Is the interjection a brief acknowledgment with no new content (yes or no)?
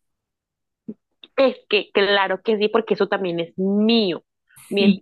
yes